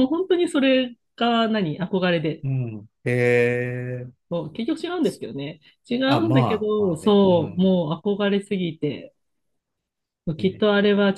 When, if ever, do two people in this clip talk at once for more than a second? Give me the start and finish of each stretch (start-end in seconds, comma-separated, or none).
6.1-7.7